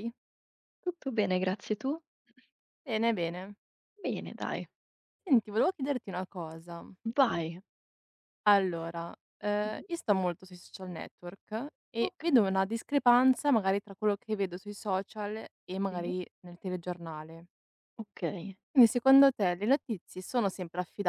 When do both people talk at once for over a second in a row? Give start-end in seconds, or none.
none